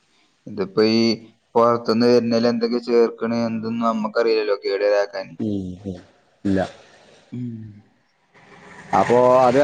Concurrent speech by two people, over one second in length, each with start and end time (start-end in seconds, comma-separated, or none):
none